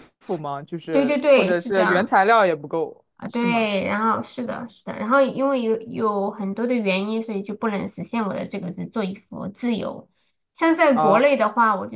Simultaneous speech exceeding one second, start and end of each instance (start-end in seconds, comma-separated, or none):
0.9-2.1